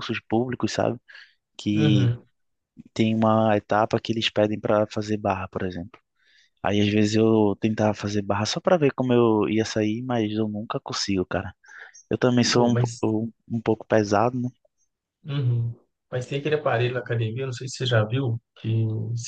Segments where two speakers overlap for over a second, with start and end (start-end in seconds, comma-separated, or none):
none